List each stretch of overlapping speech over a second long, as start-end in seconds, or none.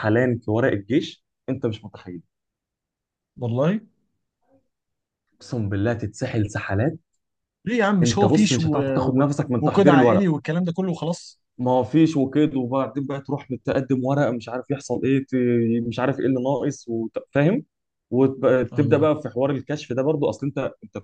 8.0-10.3